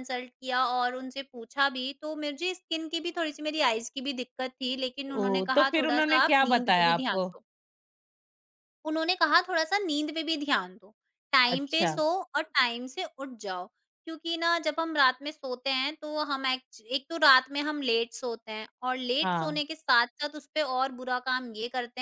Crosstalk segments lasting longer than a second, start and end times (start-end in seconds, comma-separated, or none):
5.5-7.3